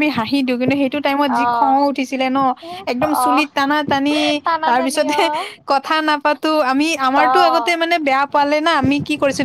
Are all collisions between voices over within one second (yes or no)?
yes